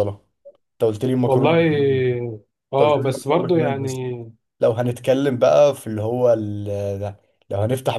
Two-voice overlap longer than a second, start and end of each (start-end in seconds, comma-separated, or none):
2.8-4.0